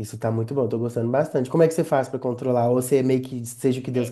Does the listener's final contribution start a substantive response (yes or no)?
yes